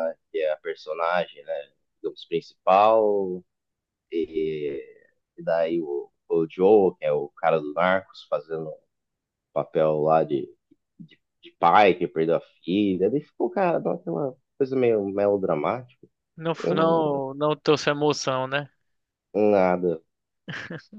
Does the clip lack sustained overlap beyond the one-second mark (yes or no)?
yes